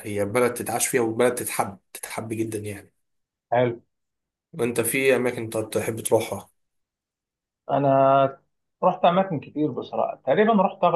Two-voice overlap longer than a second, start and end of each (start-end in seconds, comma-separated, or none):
none